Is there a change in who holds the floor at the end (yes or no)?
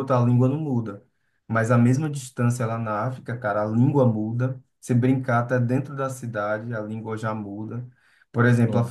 no